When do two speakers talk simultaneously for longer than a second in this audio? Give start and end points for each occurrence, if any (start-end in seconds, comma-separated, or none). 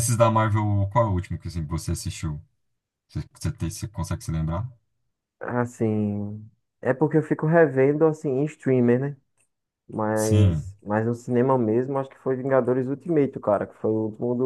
none